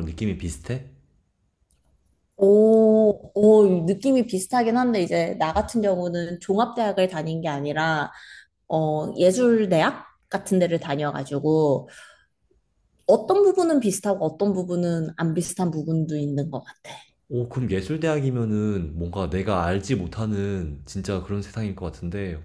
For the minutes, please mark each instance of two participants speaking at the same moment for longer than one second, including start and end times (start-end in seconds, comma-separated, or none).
none